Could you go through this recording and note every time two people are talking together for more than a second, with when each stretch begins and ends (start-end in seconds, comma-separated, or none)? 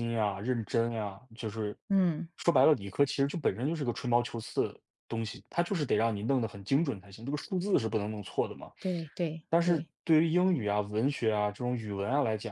none